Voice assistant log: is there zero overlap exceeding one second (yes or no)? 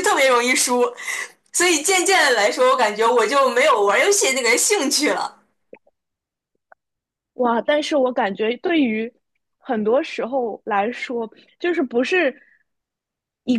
yes